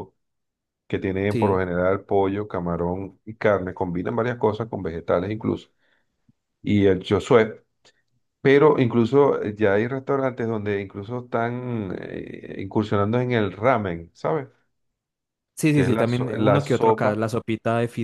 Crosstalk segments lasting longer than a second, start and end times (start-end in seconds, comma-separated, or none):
15.7-17.3